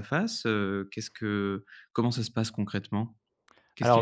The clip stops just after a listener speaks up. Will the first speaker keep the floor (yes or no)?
no